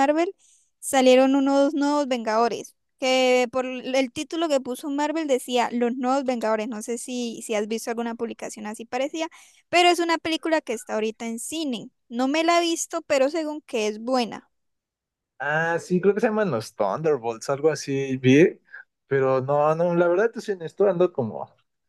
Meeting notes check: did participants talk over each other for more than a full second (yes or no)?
no